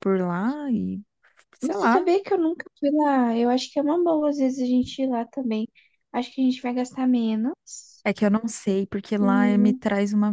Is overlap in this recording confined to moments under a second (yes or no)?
yes